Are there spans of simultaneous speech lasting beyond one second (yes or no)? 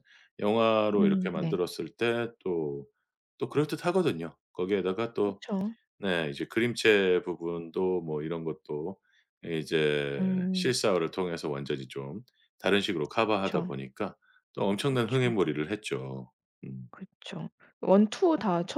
no